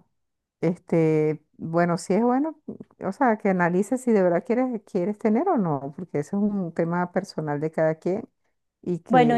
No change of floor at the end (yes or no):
no